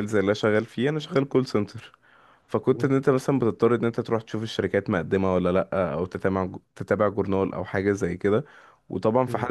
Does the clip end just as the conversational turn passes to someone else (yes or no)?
no